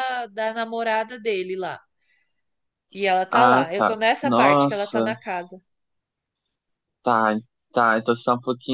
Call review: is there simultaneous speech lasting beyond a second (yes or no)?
yes